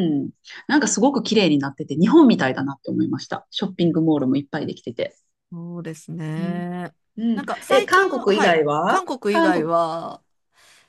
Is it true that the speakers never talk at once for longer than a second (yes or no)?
no